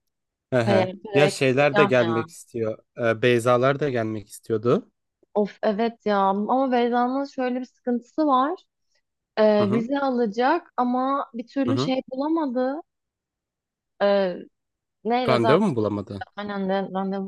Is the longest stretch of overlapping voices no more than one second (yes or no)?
no